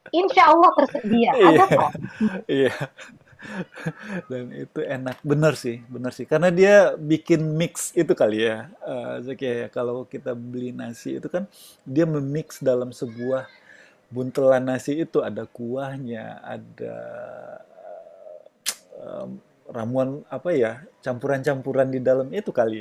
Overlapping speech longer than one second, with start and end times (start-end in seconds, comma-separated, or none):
none